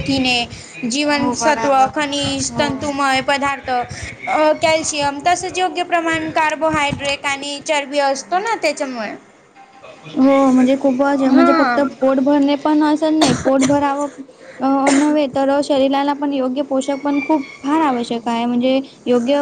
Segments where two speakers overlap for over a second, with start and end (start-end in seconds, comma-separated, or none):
1.2-2.9